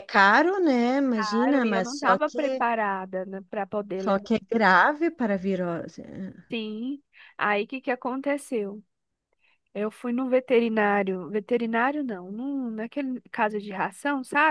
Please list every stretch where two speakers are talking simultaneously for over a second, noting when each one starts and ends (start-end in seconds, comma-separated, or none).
1.1-2.4